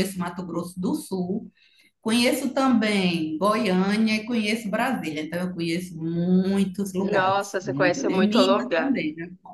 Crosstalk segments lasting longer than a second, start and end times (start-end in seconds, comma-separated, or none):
7.1-9.0